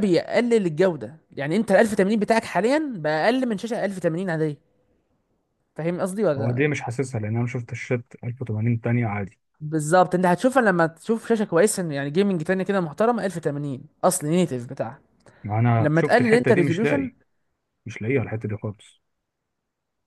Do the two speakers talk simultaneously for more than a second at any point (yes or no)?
yes